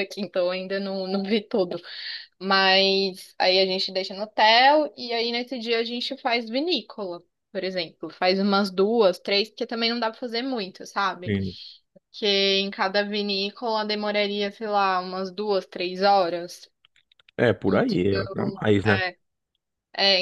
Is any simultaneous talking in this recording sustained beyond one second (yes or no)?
yes